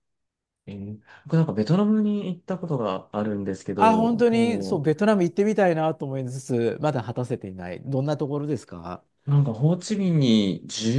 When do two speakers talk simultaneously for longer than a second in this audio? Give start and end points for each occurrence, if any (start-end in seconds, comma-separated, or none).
3.8-5.0